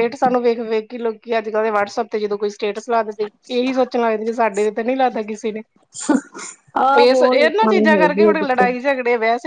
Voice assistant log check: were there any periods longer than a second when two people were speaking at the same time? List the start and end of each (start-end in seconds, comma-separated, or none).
7.0-8.7